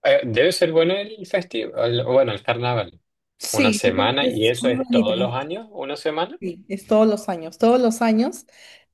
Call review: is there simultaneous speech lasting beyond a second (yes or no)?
yes